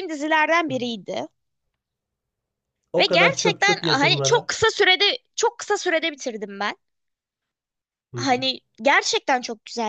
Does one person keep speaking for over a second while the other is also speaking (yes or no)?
yes